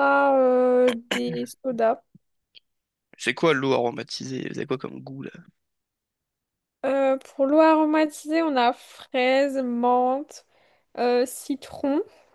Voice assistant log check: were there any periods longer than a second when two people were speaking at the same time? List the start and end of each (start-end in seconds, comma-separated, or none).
none